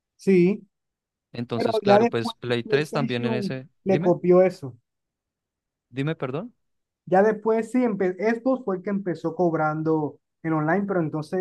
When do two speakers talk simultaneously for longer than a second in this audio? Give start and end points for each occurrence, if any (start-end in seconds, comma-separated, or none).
1.6-4.2